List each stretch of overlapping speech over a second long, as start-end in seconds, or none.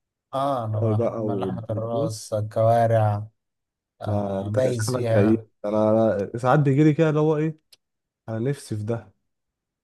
0.8-2.1, 4.0-5.4